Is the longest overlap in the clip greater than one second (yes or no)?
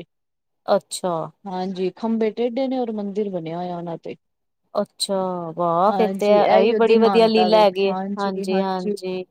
yes